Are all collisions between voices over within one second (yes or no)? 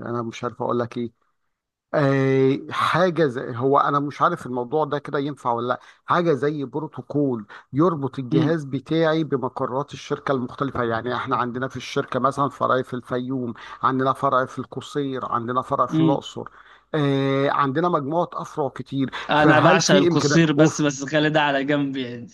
no